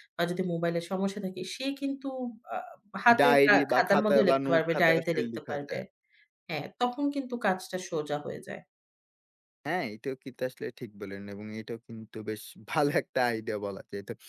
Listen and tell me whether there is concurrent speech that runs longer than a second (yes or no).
yes